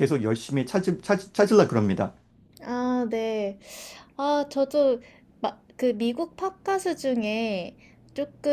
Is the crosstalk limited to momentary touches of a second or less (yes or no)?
yes